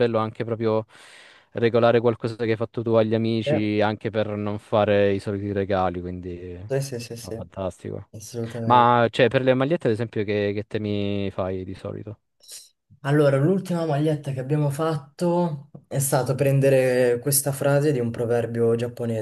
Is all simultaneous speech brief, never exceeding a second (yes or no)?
yes